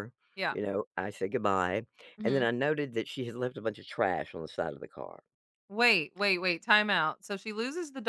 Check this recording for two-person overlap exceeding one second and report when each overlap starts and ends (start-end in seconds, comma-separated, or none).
none